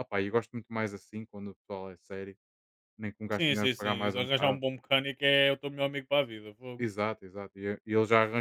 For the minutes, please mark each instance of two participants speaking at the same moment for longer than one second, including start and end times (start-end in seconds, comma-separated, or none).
3.3-4.6